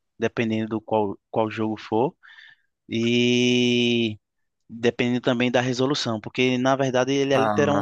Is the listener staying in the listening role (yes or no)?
yes